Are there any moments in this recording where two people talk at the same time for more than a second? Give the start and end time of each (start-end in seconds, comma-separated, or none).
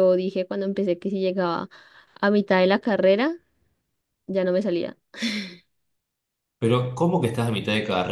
none